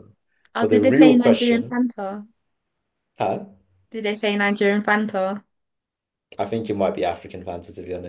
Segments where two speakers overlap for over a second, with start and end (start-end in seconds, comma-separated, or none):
0.6-1.8